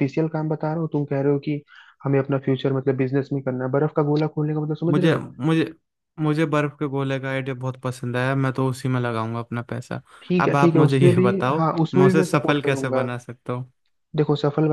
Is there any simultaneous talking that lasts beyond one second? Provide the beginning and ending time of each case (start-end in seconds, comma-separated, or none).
10.4-13.1